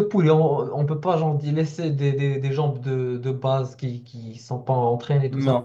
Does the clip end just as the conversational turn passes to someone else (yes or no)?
yes